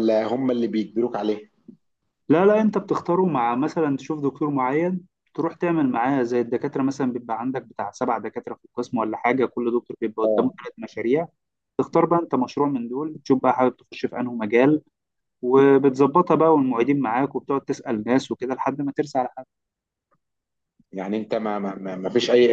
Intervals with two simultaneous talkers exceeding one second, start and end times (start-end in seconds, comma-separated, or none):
none